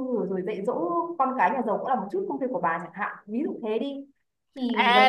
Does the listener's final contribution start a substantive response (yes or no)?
yes